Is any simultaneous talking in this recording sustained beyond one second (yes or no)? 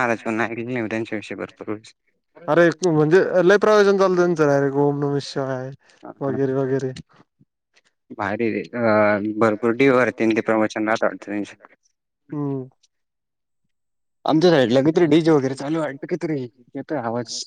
no